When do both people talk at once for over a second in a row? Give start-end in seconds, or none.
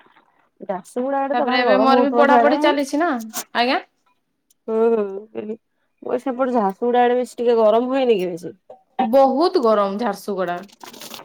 1.3-3.1